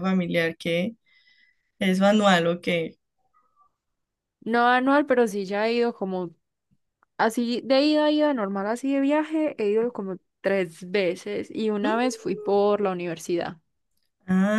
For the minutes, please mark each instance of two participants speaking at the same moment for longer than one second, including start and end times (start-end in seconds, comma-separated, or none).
none